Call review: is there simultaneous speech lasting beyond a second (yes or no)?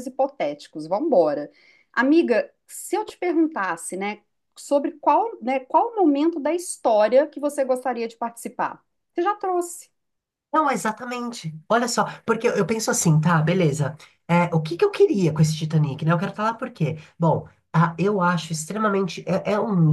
no